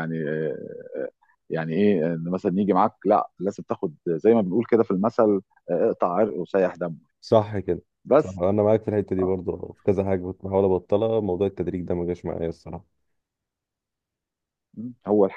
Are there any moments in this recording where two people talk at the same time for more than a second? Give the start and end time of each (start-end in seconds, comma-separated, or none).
none